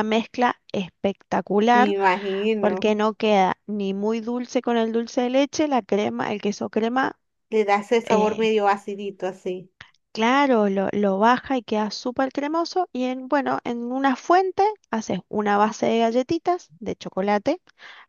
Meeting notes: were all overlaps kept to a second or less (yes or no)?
yes